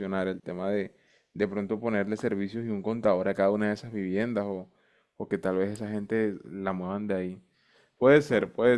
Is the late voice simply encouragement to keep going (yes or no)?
yes